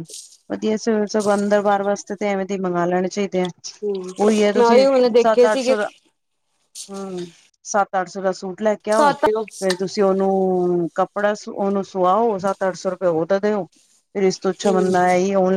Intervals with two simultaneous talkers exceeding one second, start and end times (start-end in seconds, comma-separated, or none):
none